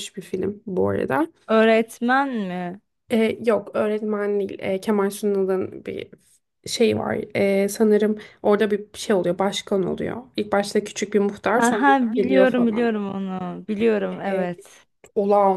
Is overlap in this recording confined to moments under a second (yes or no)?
no